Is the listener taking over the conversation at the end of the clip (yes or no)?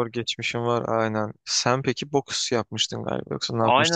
yes